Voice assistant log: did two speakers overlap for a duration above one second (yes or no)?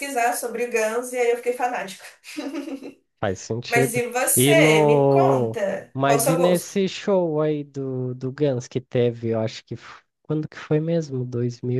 yes